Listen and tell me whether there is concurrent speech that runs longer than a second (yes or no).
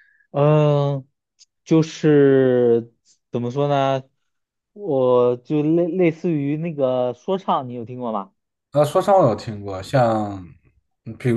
no